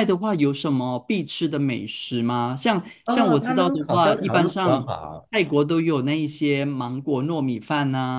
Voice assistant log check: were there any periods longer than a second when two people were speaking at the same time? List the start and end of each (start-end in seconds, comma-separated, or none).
3.0-4.9